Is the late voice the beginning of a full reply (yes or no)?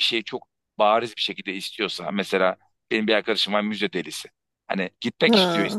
no